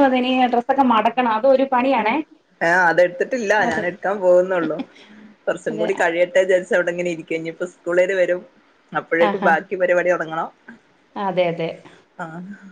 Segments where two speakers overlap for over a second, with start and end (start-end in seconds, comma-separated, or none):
none